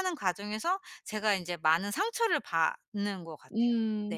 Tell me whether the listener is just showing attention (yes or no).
no